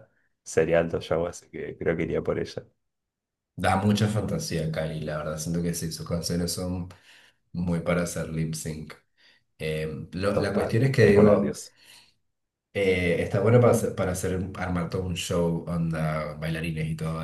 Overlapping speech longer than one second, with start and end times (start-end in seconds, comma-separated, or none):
10.3-11.6